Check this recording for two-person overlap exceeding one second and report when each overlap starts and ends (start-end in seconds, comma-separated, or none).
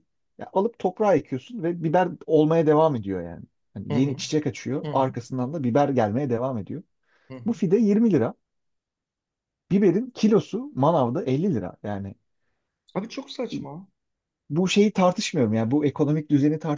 none